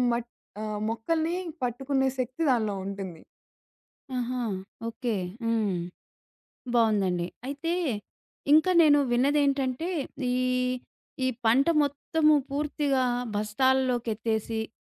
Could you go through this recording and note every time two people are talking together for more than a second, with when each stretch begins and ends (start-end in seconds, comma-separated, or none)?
none